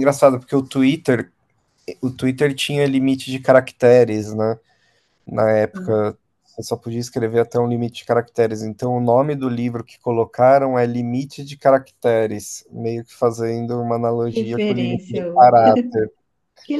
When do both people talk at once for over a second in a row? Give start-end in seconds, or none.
14.3-15.7